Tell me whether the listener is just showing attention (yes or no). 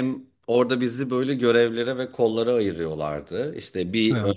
yes